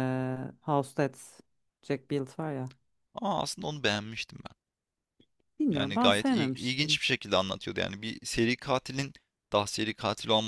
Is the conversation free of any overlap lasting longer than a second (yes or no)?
no